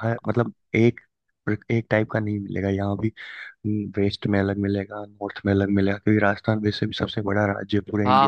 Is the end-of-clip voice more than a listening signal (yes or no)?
yes